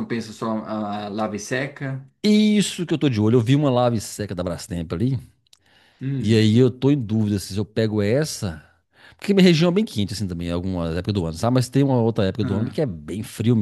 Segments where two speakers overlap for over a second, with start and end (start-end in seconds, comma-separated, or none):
none